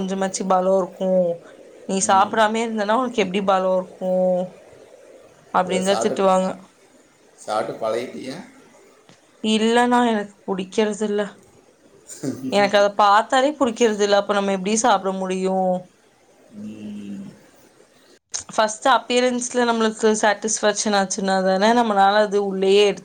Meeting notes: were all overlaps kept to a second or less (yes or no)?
yes